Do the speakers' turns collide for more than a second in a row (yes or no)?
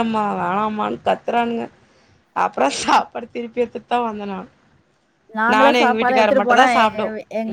yes